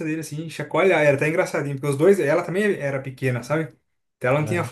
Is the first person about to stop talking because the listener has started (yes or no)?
no